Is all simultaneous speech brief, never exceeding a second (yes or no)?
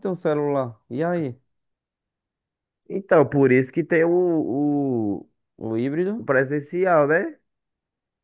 yes